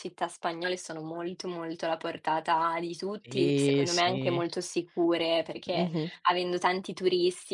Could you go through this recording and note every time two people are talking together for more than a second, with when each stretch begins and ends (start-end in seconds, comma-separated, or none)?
3.2-4.5